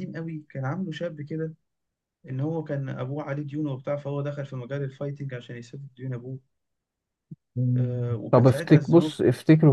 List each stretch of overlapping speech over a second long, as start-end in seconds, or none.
7.8-9.2